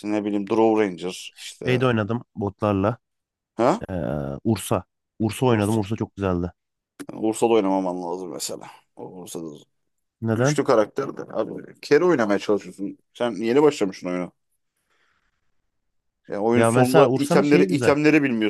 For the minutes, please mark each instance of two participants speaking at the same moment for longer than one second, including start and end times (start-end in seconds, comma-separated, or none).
16.5-17.9